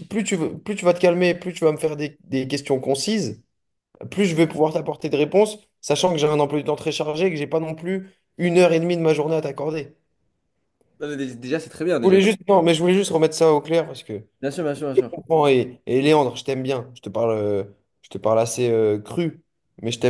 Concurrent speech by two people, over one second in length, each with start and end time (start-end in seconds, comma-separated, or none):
none